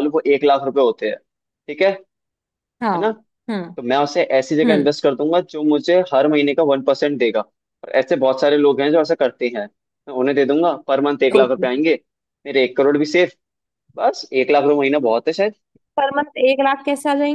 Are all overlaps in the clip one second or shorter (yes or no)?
yes